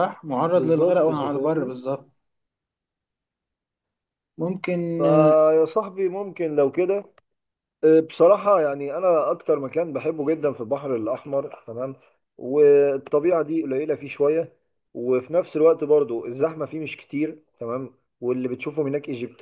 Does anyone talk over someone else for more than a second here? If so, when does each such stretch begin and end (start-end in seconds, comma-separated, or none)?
0.5-1.8